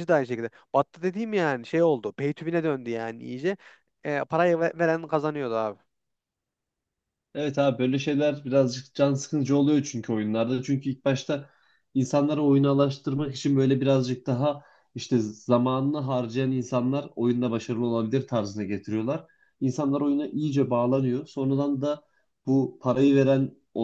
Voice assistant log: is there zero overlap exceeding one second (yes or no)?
yes